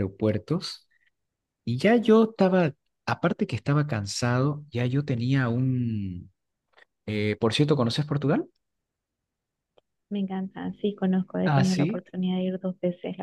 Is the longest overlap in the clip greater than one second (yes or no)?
no